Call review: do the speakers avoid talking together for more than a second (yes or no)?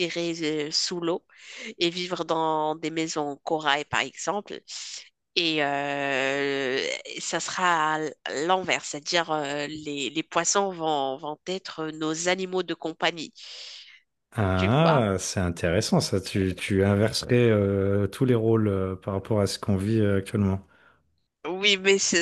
yes